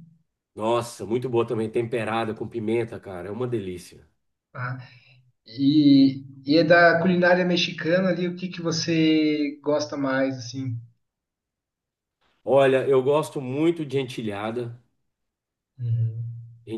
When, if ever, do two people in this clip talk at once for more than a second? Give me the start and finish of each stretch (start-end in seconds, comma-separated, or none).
none